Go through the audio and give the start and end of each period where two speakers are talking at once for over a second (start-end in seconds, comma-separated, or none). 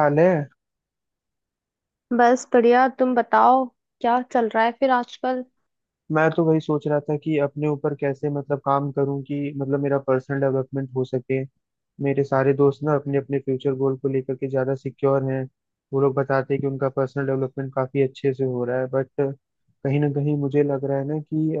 none